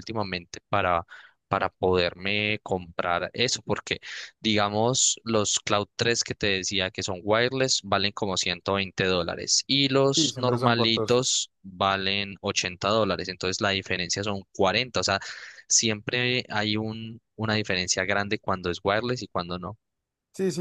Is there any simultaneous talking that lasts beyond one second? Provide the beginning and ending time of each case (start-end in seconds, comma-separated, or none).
10.2-11.4